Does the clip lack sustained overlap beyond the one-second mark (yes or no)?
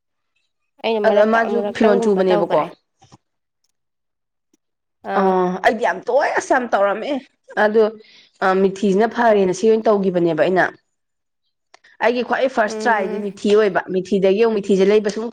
no